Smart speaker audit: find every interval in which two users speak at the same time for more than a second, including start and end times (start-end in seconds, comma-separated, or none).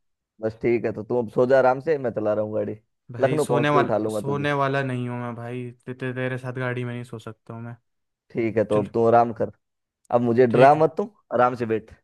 3.2-4.5